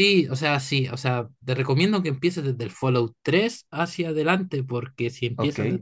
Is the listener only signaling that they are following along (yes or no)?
yes